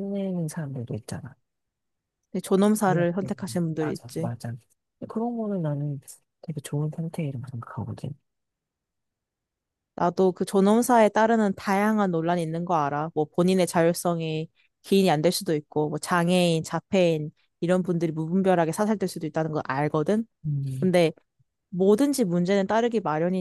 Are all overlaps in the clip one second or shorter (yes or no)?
no